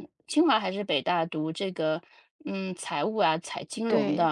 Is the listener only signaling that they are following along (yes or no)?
yes